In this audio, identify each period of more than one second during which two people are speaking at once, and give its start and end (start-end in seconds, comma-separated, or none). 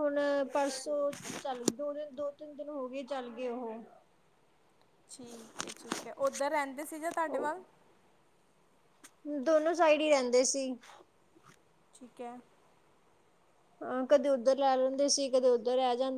none